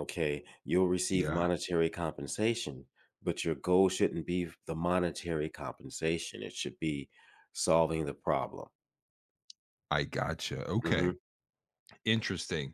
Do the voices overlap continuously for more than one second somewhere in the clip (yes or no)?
no